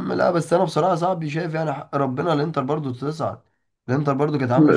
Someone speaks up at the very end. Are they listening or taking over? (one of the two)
taking over